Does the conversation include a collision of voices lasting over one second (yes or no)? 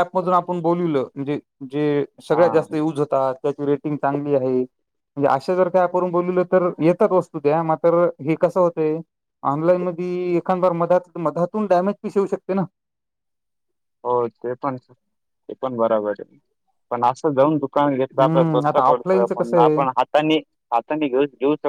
yes